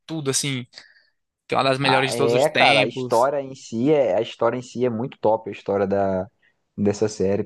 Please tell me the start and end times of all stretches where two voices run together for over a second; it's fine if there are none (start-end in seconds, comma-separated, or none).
1.8-3.3